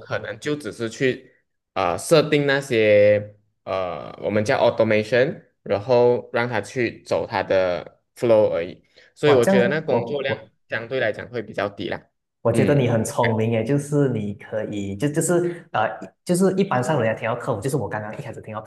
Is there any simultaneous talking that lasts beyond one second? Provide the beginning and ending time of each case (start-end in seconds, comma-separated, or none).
9.2-10.5